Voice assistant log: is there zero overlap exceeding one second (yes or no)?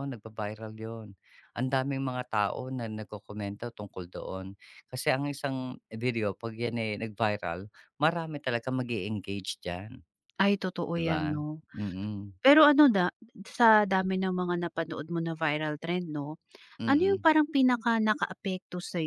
yes